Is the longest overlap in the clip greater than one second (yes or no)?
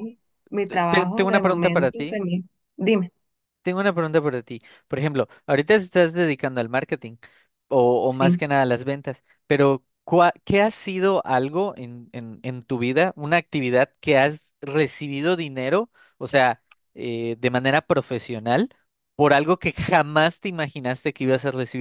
yes